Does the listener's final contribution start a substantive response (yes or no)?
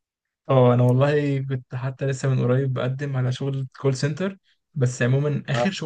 no